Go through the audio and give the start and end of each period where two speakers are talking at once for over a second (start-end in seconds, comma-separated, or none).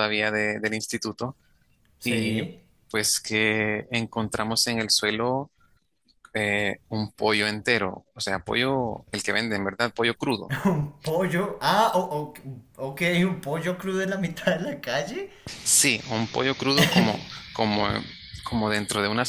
none